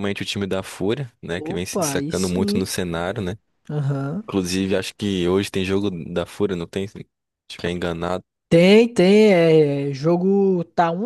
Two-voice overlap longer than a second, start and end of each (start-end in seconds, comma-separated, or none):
1.4-2.7